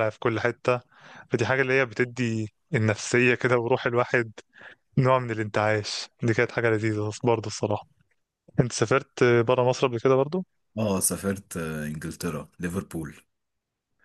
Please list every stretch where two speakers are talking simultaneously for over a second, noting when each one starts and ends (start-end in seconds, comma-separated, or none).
none